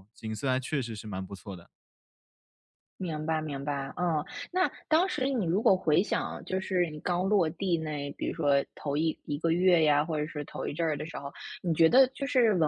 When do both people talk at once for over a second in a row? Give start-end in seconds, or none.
none